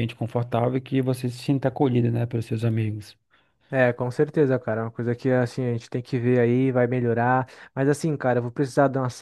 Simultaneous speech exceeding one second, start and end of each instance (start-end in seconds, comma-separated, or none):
none